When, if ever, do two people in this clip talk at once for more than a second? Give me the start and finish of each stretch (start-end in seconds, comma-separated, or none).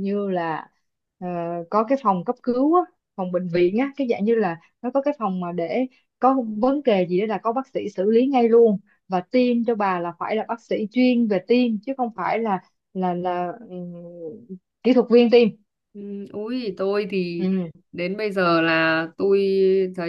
none